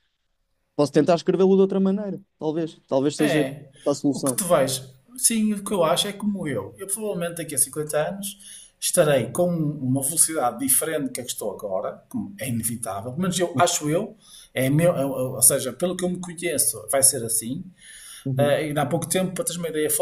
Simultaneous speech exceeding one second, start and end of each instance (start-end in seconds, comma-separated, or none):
none